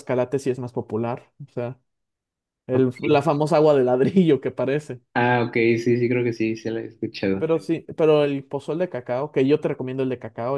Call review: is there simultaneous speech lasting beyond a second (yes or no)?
no